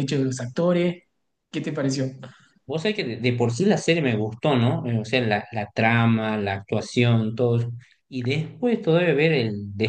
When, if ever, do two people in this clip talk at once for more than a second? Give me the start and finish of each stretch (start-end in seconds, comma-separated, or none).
none